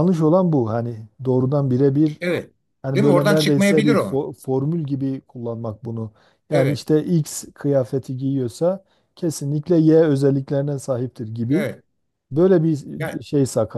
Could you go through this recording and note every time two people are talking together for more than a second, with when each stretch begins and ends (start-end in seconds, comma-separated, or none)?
3.0-4.2